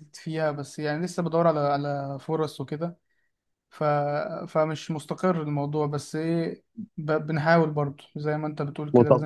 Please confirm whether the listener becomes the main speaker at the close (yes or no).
yes